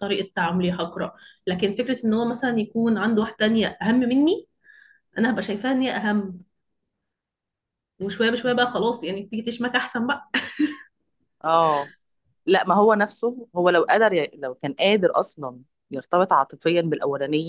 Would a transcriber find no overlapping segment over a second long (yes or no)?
yes